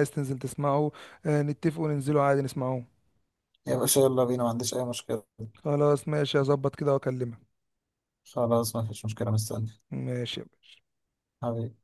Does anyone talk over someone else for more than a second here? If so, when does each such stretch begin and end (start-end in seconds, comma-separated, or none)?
none